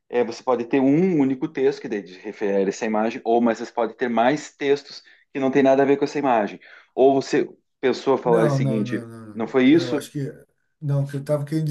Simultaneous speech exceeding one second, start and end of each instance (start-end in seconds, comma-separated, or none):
8.2-10.1